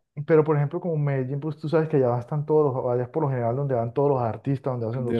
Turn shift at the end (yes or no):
yes